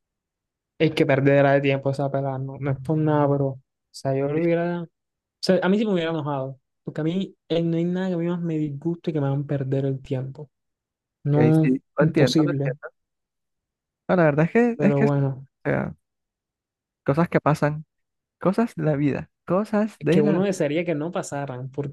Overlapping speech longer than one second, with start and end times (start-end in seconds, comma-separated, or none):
11.3-12.8